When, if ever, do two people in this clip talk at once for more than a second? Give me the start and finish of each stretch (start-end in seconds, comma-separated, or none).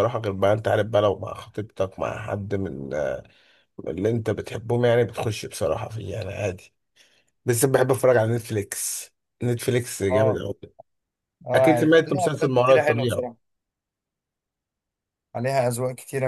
11.5-13.3